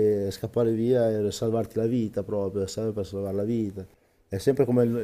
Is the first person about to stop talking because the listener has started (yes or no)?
no